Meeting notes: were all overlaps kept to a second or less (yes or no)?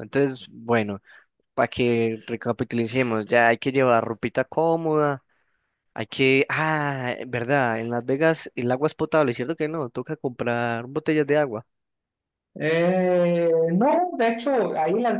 yes